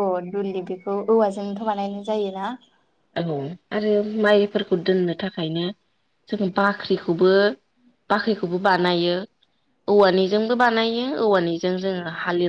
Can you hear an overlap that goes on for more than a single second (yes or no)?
no